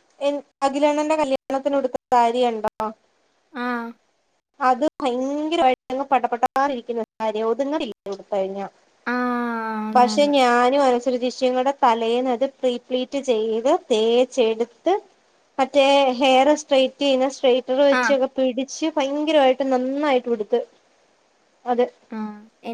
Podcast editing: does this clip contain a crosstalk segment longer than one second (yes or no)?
no